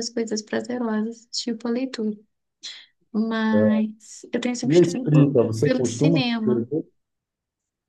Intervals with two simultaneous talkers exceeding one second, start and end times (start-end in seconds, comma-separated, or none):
4.6-6.7